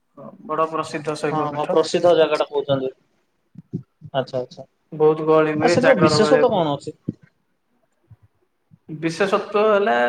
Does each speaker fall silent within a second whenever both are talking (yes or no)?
no